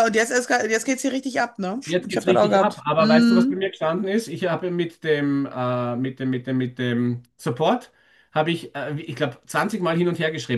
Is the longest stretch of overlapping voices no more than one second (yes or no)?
no